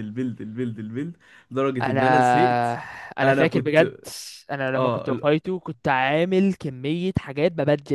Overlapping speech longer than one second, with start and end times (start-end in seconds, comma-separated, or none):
none